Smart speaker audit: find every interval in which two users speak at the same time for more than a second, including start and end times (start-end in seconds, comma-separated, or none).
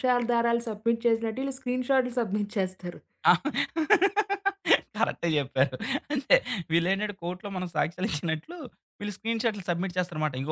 none